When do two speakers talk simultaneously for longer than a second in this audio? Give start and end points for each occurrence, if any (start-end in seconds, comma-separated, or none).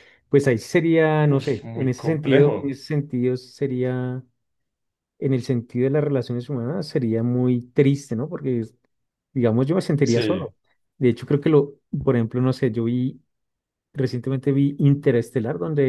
1.3-2.8